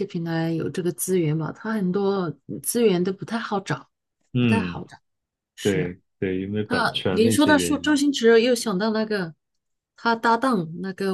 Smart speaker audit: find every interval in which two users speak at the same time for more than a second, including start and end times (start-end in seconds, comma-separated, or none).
6.7-8.0